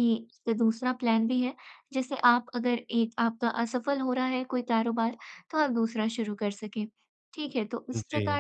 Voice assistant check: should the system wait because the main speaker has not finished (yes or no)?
yes